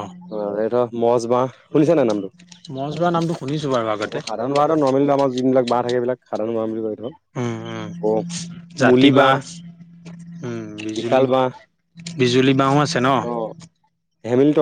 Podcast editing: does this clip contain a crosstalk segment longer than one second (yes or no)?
no